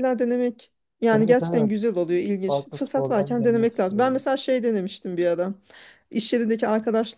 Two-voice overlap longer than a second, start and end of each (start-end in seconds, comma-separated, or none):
2.5-4.2